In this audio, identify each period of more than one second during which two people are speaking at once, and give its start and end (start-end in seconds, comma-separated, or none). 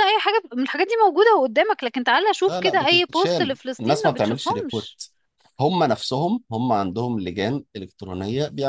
2.5-5.0